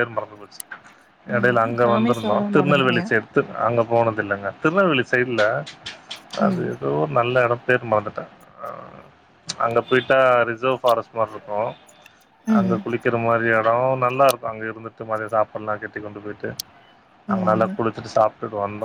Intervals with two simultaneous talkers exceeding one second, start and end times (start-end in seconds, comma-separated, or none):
1.4-3.1